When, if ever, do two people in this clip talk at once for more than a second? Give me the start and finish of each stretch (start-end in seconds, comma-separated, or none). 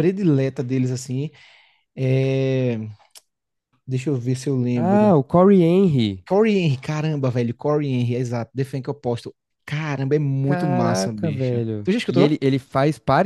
10.4-12.4